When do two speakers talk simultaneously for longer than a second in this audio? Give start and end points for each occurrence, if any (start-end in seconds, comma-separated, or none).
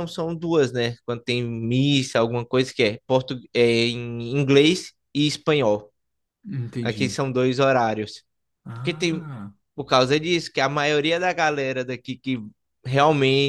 none